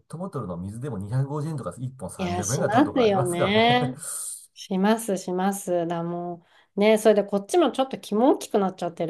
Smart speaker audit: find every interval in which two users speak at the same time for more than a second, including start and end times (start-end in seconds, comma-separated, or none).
2.2-3.9